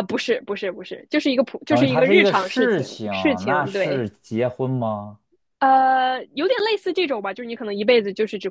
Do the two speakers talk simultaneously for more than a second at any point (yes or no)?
yes